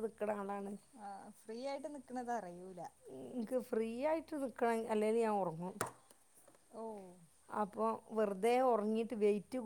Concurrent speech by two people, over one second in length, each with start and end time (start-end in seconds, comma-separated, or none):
none